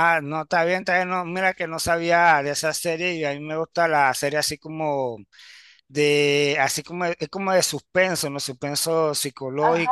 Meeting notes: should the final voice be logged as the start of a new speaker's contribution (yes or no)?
yes